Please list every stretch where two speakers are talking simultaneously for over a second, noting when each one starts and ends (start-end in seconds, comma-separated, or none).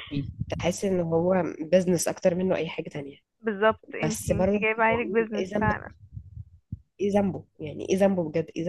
4.0-5.7